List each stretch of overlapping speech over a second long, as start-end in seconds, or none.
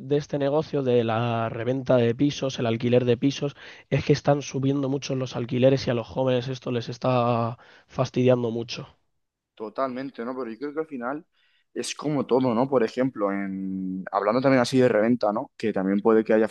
none